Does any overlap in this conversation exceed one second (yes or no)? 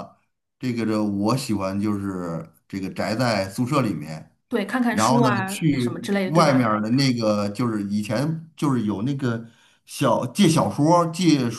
yes